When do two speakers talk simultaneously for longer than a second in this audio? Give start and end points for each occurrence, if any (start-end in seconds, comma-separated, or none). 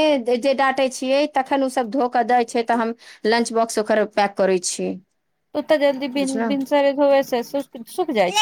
none